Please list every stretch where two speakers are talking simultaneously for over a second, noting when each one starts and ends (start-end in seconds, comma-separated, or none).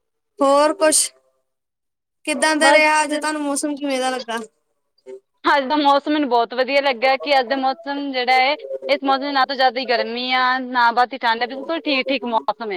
none